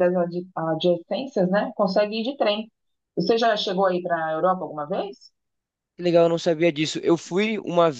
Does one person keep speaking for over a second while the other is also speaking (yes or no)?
no